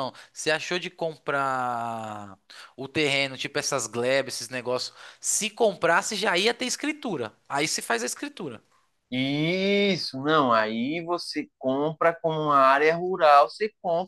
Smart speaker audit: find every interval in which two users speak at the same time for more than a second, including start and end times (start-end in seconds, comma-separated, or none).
none